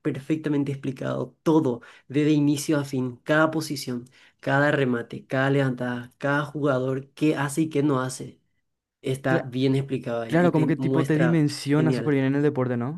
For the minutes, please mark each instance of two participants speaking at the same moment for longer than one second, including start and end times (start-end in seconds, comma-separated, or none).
10.3-12.2